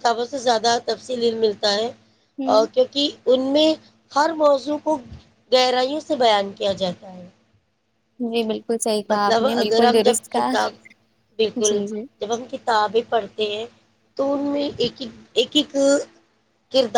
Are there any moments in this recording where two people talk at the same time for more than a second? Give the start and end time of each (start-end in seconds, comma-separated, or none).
9.1-10.5